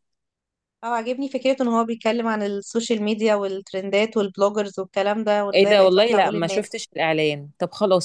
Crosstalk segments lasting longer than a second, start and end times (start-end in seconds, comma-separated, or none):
5.5-6.8